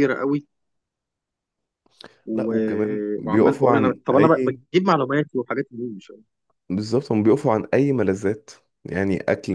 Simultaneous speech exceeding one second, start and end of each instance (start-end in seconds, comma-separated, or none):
2.3-4.6